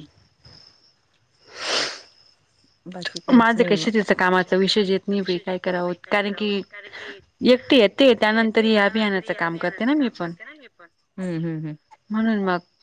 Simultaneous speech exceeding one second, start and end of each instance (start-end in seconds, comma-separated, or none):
7.5-10.3